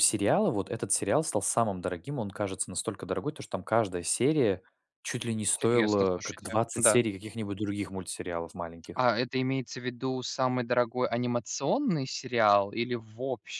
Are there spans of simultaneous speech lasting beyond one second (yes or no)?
yes